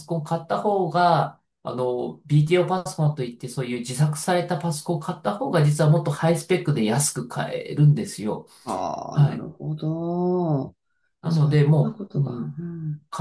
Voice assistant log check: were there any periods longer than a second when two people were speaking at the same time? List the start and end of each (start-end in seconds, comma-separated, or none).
11.3-12.7